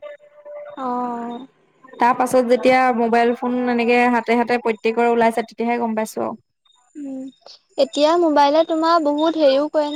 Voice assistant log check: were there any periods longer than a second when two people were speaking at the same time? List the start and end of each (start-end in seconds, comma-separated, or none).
none